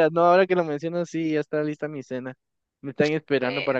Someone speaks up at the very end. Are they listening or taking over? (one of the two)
listening